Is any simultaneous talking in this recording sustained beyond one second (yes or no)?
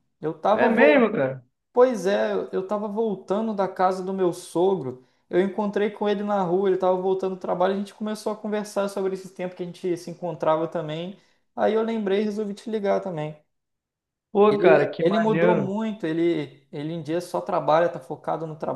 yes